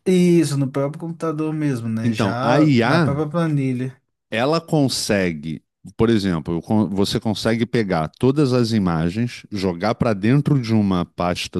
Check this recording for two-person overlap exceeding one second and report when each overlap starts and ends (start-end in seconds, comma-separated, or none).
2.0-3.2